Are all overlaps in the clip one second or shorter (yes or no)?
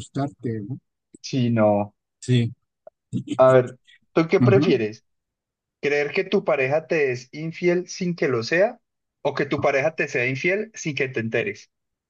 yes